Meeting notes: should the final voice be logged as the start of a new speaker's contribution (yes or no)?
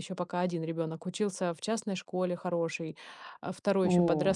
no